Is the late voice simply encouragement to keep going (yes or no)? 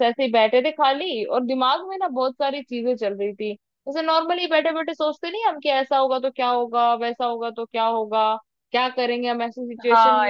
no